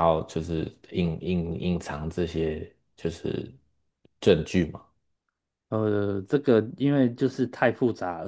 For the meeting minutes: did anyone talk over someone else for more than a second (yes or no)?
no